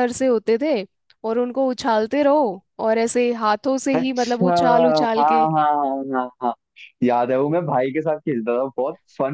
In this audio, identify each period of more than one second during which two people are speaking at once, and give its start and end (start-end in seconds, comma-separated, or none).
4.0-5.5